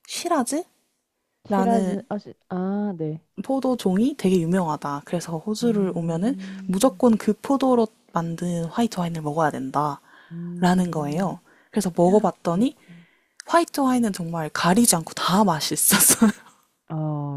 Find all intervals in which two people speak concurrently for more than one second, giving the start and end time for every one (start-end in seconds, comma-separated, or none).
5.6-7.0